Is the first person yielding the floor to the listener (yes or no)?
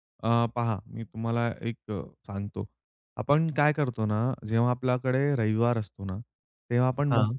no